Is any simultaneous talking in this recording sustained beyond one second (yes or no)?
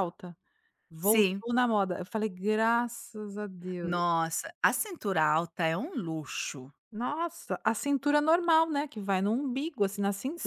no